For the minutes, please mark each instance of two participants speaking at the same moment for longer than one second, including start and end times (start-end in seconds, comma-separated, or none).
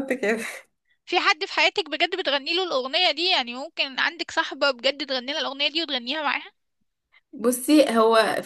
none